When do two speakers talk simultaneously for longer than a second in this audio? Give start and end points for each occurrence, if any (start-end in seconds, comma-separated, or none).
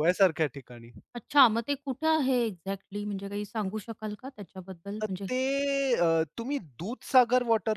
none